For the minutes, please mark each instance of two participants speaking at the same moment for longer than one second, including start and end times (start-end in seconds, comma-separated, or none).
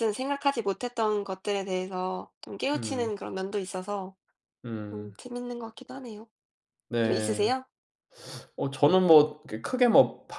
none